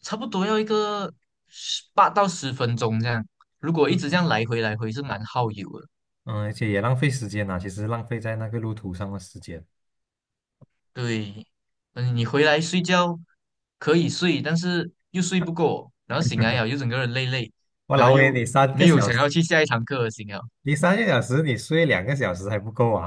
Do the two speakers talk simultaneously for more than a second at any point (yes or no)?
yes